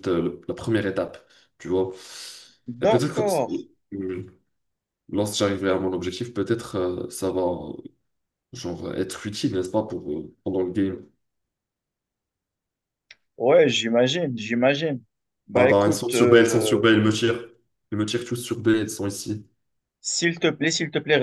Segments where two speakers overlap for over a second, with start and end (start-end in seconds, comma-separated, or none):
15.6-16.9